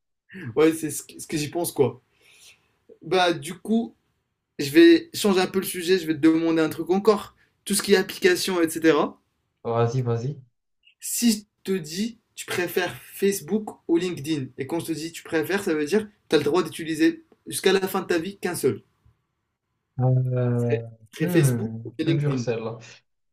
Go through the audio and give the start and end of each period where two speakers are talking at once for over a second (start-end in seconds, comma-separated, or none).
20.5-22.4